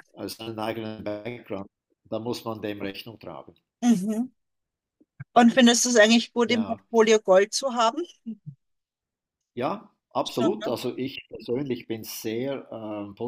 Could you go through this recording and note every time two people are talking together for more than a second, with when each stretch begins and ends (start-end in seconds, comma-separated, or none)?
none